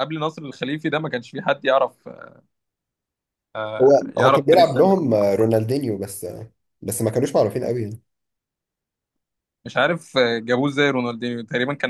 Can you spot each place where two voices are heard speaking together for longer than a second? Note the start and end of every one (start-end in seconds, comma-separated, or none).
3.8-5.2